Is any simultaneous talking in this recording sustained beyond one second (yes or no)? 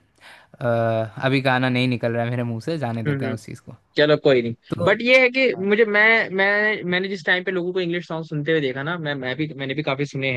no